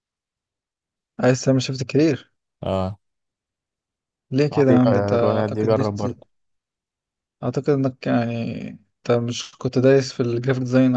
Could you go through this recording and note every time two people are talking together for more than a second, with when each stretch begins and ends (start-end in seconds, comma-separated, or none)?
4.5-6.1